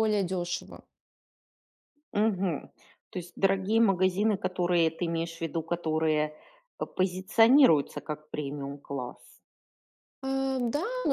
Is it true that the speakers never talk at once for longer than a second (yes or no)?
yes